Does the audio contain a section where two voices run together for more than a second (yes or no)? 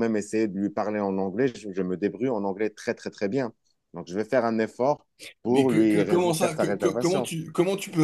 yes